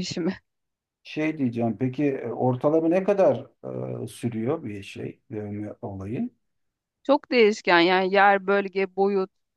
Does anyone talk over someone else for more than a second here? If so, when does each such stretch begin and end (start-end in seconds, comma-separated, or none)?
none